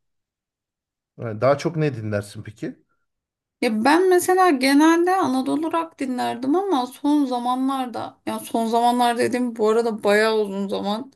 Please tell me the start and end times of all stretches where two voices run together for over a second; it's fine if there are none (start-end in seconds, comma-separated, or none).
none